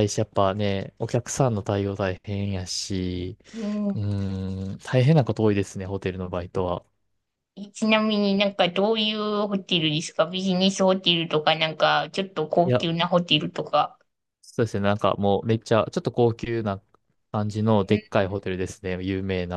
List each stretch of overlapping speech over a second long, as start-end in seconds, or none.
none